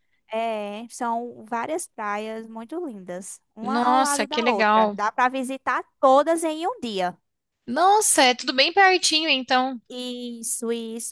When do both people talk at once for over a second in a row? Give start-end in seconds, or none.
3.6-5.0